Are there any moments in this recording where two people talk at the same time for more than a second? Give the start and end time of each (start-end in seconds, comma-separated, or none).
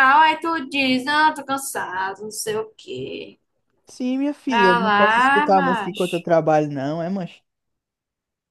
4.5-6.3